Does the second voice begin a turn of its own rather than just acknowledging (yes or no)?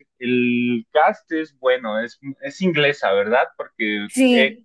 no